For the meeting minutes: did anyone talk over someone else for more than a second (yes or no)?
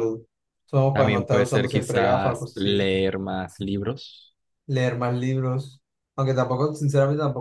yes